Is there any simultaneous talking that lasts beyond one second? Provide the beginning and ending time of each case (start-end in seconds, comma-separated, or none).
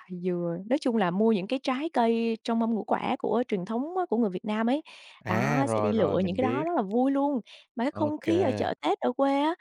5.2-6.6